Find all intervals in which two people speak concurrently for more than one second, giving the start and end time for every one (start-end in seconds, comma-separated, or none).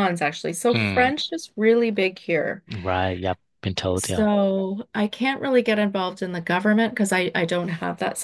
none